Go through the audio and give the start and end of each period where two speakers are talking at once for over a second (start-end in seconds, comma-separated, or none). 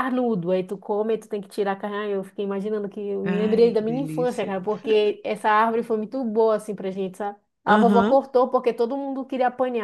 3.2-4.5